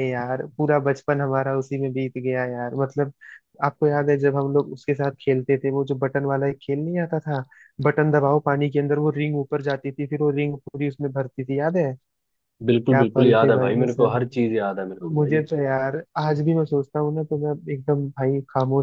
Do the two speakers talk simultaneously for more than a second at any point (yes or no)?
yes